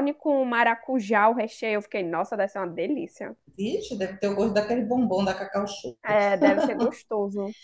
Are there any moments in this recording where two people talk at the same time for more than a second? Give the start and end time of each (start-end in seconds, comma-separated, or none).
none